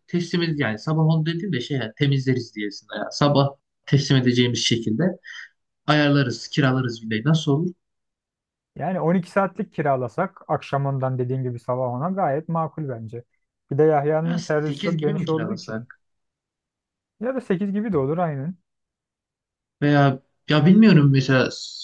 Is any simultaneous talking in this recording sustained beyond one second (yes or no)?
yes